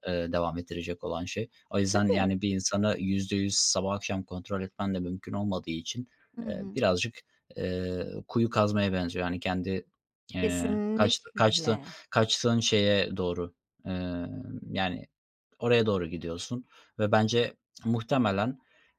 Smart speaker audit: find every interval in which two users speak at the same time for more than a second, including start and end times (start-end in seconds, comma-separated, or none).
10.4-11.8